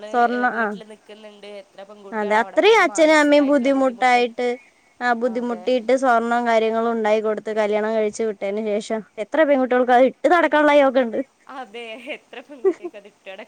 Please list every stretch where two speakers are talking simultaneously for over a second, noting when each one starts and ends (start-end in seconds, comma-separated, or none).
2.2-4.2